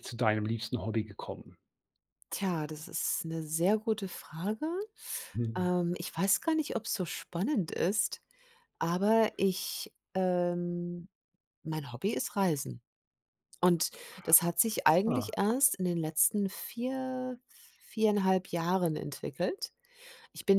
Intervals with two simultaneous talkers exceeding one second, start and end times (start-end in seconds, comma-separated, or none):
none